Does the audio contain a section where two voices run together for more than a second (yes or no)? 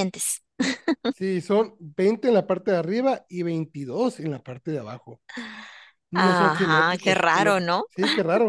yes